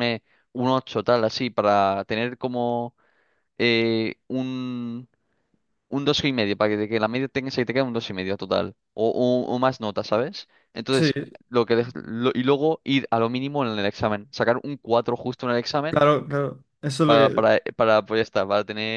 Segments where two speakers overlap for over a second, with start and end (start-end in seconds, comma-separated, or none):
none